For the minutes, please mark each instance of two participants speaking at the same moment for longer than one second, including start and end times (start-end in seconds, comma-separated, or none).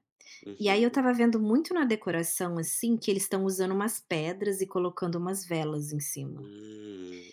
none